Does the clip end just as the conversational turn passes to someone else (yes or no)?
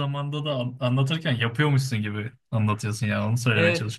yes